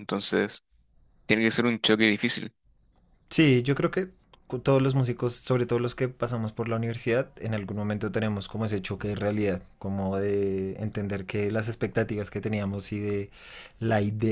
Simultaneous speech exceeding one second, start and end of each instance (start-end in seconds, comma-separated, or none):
none